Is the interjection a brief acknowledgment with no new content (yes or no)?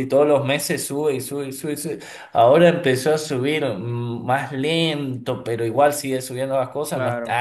yes